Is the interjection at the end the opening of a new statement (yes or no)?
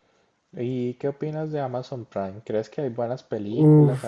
yes